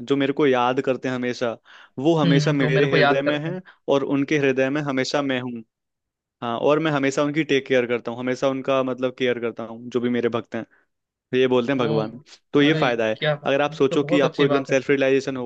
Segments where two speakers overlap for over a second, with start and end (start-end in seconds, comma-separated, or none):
2.2-3.6, 12.7-14.8